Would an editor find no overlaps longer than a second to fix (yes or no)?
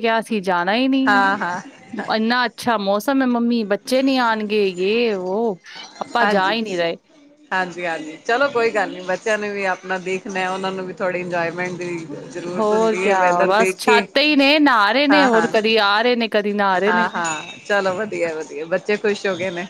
no